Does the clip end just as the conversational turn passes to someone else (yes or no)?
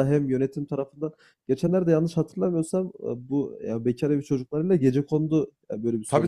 yes